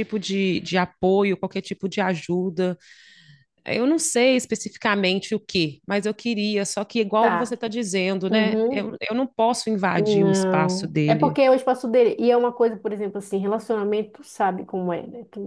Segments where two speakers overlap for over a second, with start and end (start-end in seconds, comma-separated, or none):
10.0-11.4